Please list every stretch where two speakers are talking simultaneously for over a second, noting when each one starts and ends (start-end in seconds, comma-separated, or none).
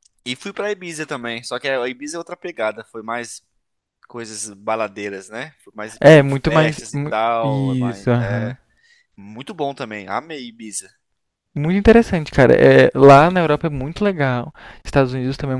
6.0-8.6